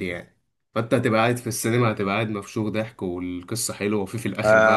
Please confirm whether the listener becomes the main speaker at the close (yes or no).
yes